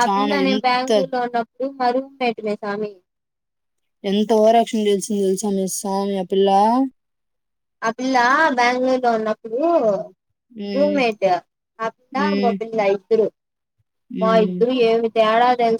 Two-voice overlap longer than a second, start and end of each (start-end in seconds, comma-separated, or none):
none